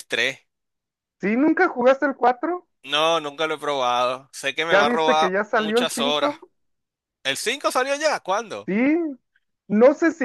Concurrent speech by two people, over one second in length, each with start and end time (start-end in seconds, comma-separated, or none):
4.7-6.3